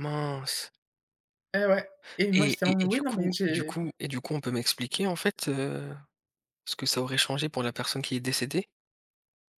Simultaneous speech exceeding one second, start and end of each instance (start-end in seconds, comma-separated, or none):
2.3-3.8